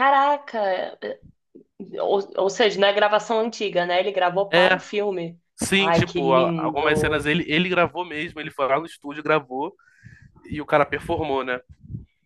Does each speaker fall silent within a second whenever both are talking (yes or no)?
no